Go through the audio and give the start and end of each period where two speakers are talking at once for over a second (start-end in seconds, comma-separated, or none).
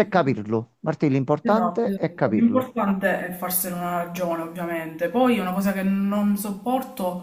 1.4-2.7